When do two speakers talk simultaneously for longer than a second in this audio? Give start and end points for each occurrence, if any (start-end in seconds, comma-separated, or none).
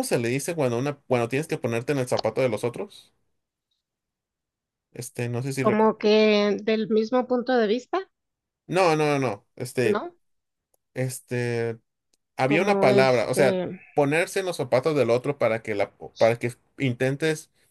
12.4-13.8